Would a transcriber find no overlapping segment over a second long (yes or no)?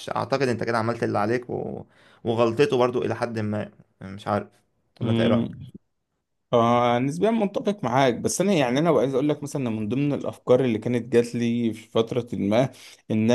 yes